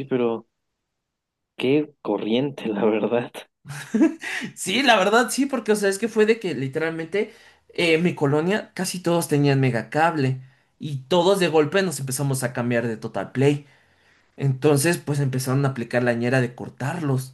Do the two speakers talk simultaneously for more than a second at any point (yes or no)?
no